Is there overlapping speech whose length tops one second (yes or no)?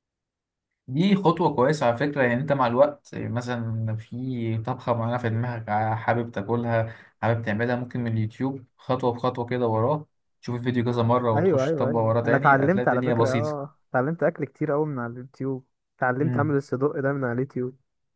yes